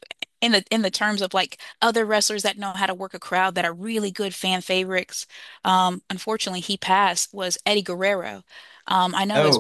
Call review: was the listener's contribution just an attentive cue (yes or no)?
yes